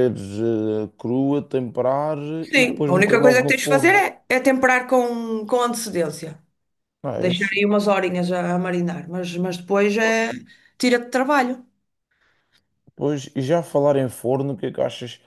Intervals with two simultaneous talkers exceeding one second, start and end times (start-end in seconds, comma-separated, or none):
2.5-4.0